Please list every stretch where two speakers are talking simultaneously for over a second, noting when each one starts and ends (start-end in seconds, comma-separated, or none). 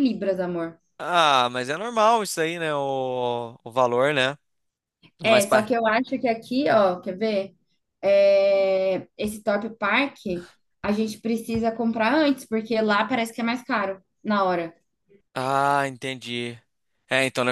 none